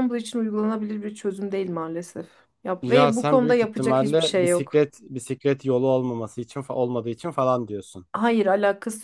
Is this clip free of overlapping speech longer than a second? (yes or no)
no